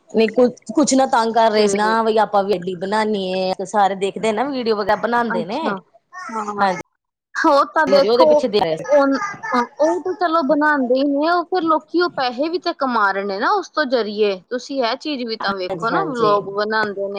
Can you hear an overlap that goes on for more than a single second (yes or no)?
no